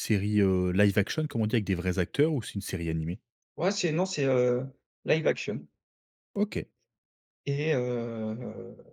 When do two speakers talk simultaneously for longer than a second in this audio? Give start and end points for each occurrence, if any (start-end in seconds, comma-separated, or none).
none